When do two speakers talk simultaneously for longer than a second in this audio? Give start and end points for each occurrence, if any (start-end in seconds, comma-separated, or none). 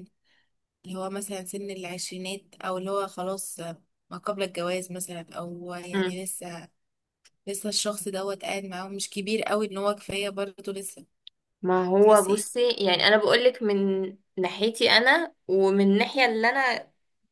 none